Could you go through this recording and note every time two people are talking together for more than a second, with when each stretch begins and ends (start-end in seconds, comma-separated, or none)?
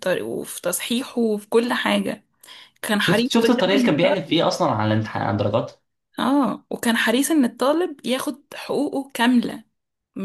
3.0-4.4